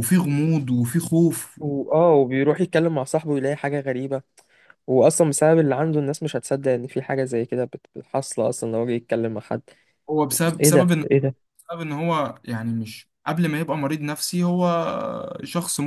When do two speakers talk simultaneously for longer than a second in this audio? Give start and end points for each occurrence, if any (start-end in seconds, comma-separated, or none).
none